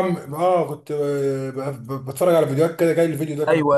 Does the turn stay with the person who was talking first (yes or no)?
no